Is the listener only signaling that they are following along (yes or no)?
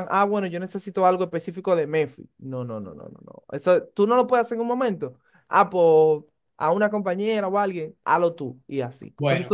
no